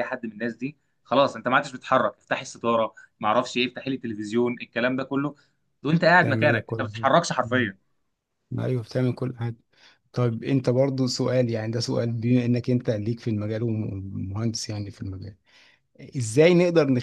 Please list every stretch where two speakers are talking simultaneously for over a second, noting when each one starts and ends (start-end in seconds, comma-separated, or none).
6.2-7.7